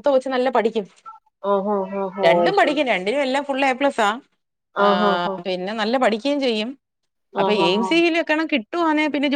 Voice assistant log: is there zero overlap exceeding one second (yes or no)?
yes